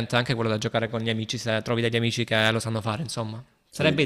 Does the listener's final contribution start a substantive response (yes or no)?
no